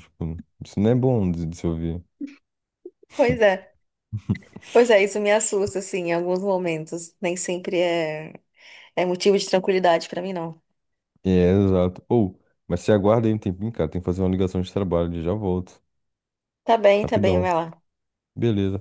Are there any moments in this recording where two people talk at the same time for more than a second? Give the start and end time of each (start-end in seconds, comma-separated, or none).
none